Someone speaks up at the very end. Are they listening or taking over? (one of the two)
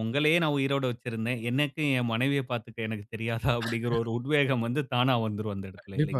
taking over